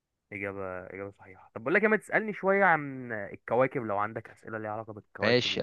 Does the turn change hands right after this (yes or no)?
yes